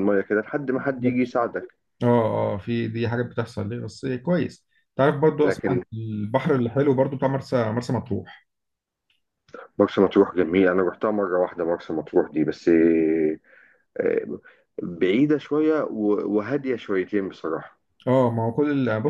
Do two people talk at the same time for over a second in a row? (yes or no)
no